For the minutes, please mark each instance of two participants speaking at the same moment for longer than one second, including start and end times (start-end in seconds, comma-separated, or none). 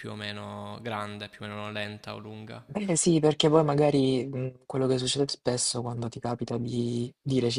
none